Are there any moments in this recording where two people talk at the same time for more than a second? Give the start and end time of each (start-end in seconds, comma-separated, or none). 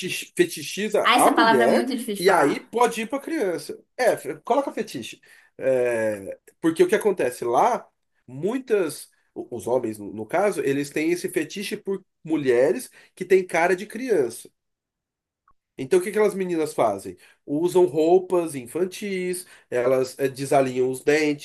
1.0-2.8